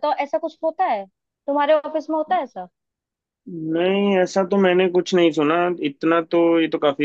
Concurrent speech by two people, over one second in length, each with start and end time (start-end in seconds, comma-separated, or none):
none